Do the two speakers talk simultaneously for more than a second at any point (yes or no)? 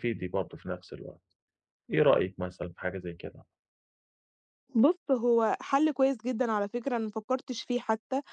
no